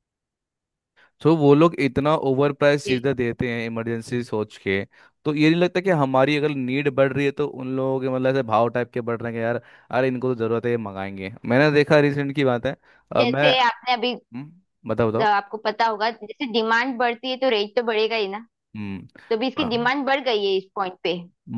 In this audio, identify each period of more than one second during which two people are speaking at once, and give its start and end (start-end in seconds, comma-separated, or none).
none